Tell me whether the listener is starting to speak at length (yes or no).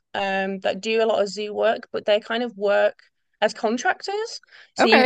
no